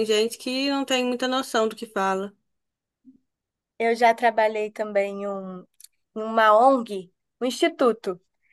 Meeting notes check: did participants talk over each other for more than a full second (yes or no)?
no